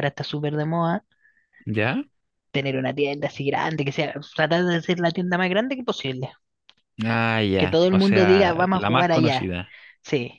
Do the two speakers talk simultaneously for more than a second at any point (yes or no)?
yes